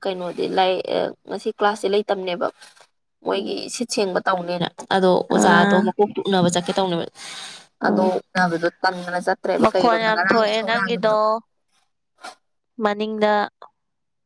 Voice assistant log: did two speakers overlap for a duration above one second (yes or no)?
yes